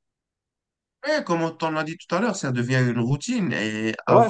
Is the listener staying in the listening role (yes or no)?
yes